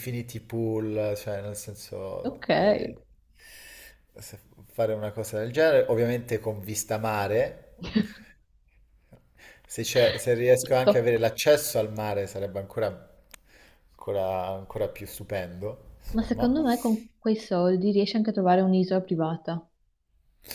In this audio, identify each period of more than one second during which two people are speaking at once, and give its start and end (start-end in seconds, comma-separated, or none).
none